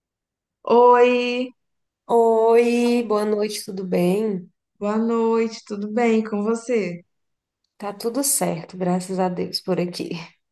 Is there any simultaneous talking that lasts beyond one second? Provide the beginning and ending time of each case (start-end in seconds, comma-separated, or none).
none